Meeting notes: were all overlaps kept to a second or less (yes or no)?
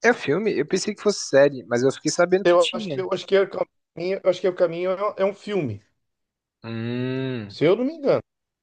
yes